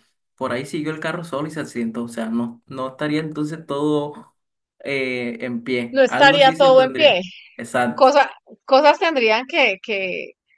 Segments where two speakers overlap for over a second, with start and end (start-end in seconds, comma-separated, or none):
5.9-7.2